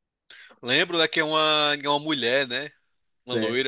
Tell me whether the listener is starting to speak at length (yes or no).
yes